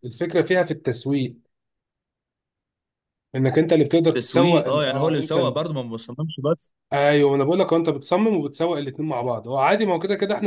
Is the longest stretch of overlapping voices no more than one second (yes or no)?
no